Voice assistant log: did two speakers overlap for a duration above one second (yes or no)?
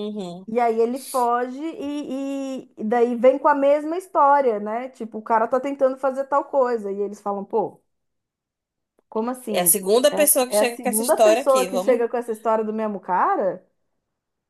yes